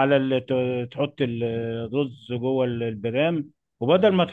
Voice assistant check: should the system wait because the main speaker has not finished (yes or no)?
yes